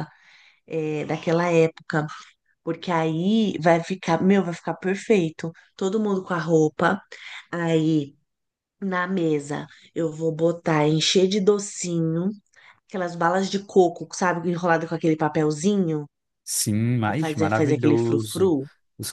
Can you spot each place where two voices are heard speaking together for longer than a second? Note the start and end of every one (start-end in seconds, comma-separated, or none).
17.0-18.5